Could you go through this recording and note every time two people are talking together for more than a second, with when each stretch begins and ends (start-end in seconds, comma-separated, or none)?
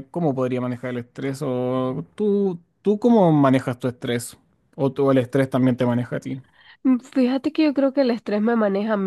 none